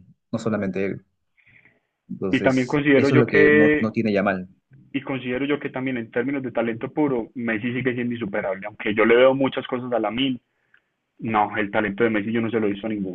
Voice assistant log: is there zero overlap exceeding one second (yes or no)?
no